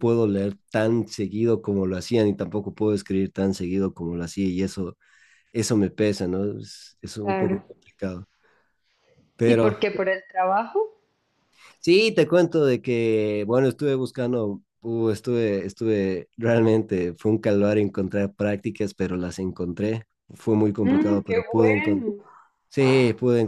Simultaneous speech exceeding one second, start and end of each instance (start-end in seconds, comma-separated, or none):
20.8-22.1